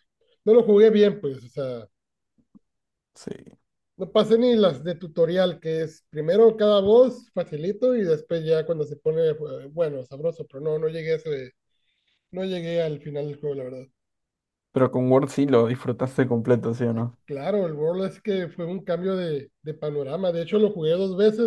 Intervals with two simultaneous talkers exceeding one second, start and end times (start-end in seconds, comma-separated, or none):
none